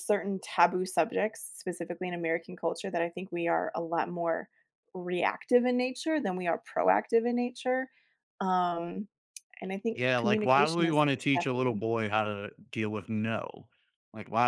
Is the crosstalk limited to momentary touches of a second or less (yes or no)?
no